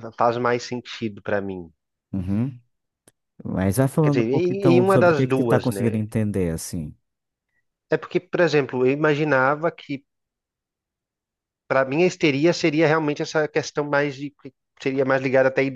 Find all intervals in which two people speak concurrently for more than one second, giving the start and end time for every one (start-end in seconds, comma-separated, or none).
4.0-6.0